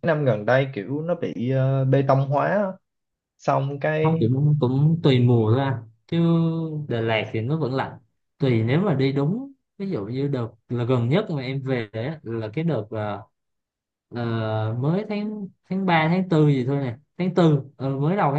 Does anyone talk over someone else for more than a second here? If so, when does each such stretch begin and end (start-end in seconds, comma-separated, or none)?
none